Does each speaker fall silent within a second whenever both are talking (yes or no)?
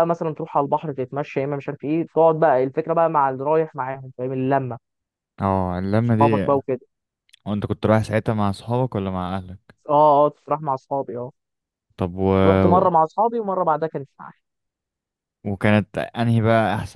yes